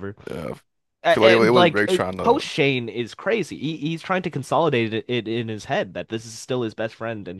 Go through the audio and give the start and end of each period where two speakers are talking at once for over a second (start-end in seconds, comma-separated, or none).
1.0-2.4